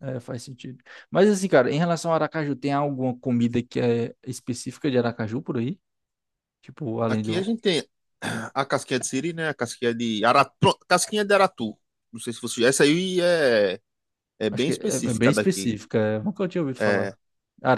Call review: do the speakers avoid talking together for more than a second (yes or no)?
no